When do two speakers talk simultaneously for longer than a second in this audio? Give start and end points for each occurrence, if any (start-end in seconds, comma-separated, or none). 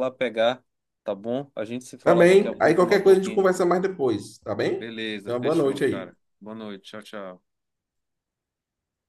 2.0-3.5, 4.8-6.1